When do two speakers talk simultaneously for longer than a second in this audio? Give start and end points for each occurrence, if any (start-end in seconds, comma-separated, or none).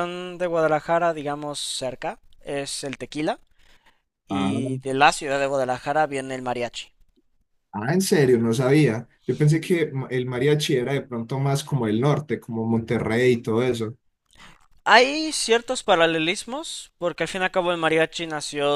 none